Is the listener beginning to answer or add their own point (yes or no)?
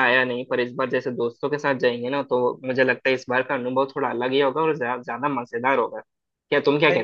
yes